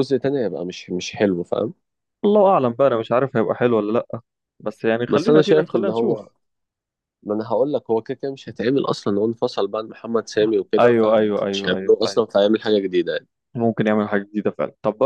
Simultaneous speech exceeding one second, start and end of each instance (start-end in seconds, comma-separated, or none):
5.1-6.3, 10.8-12.2